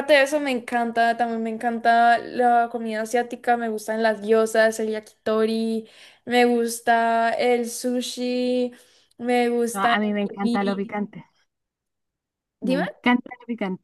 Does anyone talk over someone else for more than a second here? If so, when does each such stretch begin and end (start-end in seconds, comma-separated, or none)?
9.7-10.9